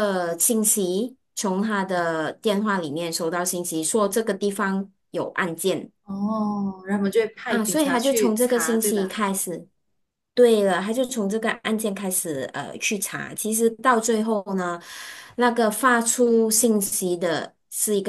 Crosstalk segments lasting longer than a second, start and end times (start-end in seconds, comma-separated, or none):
7.5-9.2